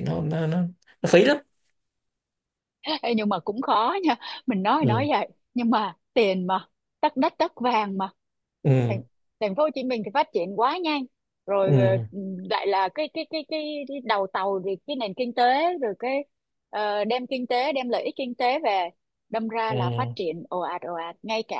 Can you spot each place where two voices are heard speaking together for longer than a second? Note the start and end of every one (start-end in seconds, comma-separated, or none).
none